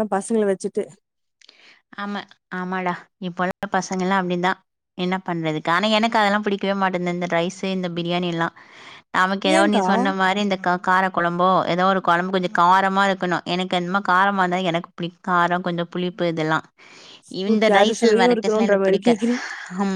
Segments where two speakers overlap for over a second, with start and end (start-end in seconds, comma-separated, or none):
17.5-19.1